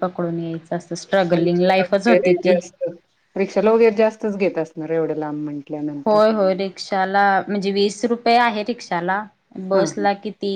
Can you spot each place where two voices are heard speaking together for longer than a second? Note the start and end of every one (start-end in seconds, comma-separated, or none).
1.3-2.6